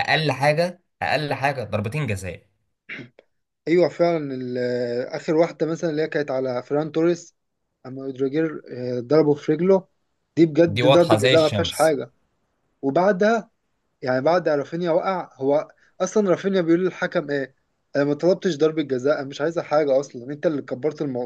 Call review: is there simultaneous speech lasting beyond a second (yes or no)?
yes